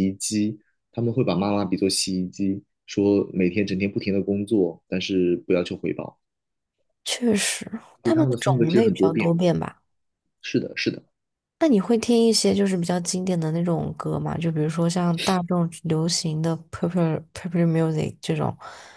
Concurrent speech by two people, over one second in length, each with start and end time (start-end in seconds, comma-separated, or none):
8.0-9.3